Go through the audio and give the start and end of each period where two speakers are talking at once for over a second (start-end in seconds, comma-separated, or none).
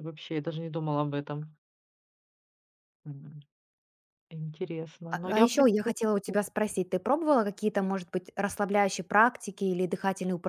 5.1-6.4